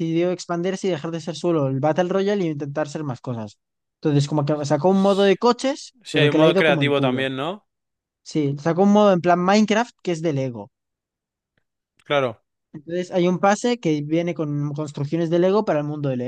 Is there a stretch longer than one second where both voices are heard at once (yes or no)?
yes